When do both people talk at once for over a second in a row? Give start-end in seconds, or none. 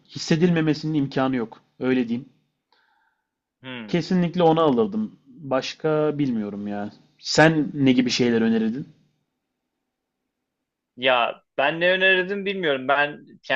none